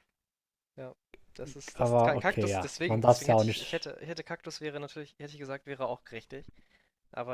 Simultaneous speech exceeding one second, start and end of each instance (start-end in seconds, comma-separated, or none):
1.8-3.9